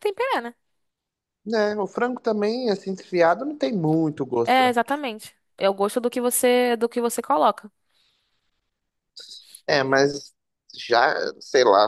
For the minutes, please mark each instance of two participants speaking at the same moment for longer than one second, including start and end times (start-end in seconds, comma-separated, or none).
none